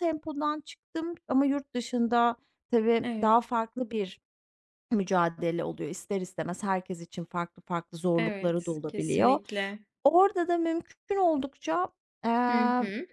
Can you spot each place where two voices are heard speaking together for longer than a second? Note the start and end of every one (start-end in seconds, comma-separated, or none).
8.2-9.4